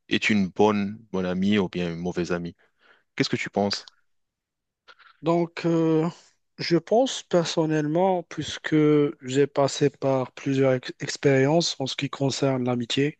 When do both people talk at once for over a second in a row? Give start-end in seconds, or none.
none